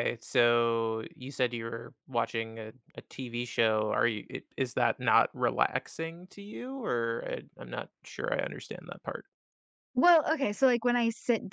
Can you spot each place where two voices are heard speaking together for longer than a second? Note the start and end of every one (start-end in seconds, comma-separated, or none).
none